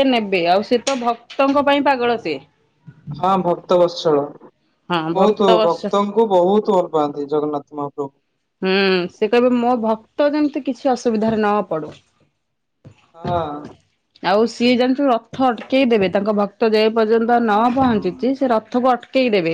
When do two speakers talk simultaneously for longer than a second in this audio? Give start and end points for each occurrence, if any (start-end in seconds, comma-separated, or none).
none